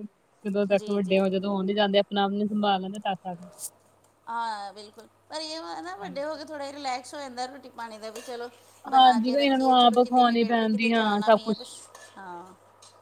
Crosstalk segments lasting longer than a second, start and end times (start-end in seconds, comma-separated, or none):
8.9-11.2